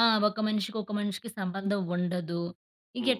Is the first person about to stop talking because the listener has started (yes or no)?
no